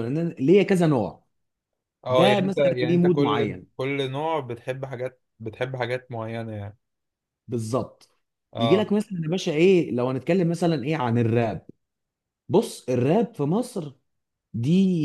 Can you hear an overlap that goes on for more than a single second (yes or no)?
yes